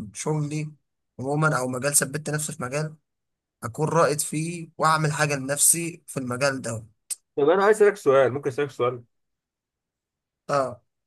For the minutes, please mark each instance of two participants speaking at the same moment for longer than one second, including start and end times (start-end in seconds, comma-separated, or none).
none